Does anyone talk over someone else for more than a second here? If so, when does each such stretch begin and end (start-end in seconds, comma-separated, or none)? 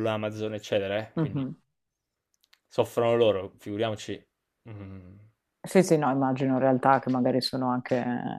none